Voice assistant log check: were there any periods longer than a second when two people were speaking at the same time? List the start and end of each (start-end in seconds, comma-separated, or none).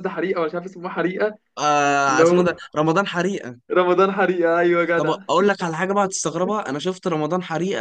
none